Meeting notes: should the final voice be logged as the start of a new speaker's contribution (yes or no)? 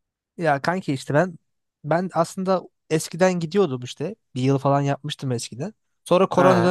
no